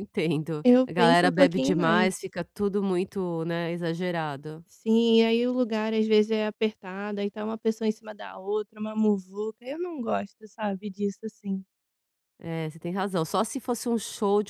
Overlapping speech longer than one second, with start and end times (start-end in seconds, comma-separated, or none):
0.6-2.3